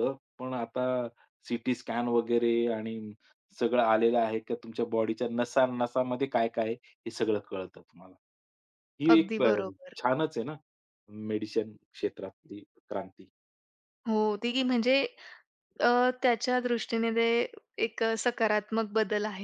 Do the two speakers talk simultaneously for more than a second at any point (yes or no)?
no